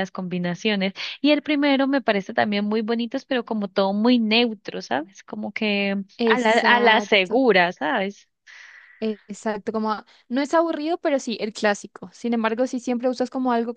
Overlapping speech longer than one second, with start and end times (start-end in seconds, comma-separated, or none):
6.2-7.4